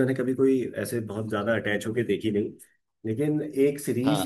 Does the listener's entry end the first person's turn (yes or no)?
no